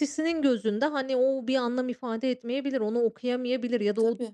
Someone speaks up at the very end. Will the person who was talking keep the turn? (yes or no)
yes